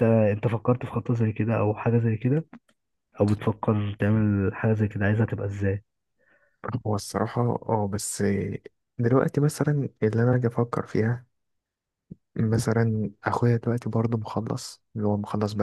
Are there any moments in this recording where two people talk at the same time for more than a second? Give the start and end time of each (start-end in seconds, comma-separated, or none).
none